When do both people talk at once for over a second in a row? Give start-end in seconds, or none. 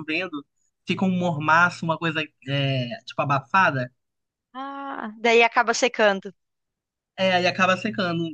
none